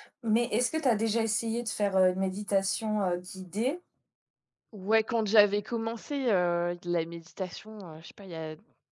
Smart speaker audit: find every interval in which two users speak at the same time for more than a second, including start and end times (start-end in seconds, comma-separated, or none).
none